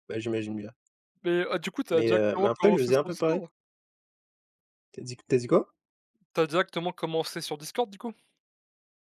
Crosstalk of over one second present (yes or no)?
yes